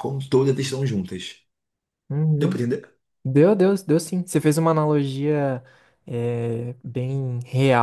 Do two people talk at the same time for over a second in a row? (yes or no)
no